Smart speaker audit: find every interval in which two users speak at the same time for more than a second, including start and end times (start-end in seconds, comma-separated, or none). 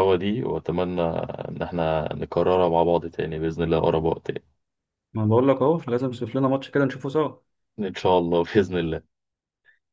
none